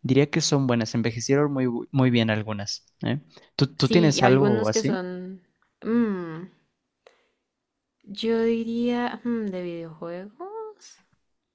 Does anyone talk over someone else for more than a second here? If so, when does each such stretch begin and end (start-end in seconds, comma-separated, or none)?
3.8-5.0